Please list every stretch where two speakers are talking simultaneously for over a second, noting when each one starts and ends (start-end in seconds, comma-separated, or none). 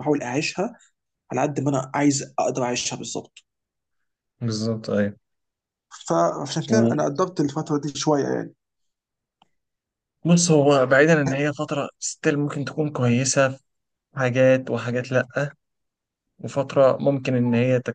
none